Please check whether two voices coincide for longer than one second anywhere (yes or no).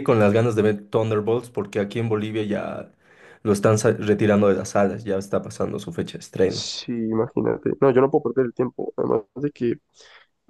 no